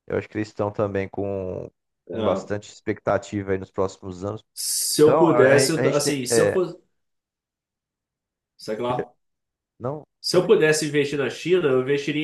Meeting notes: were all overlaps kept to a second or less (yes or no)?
no